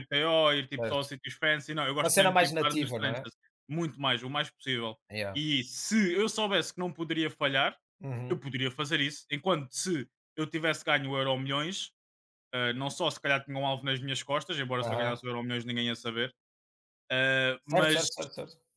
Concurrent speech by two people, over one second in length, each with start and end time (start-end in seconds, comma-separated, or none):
2.0-3.3